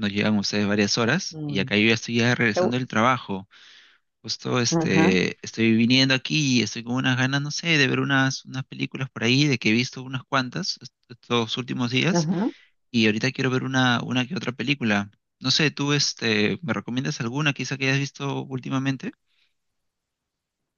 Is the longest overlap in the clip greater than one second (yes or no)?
no